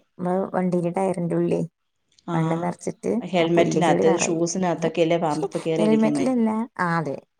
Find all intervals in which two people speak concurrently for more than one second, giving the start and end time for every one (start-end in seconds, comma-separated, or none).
2.4-4.5